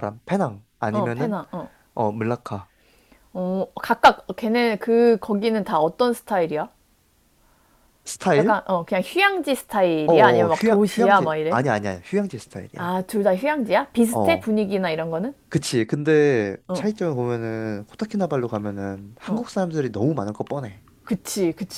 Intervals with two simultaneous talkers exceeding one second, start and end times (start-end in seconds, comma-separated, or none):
10.1-11.6